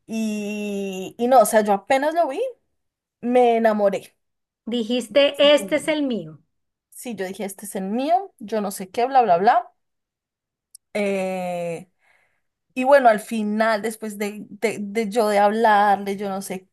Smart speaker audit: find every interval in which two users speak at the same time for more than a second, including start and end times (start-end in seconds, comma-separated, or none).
none